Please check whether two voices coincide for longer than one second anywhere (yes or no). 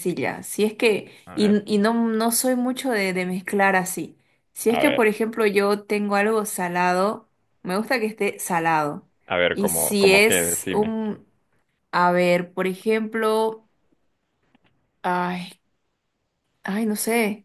yes